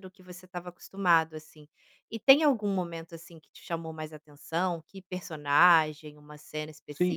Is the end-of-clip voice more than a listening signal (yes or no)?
yes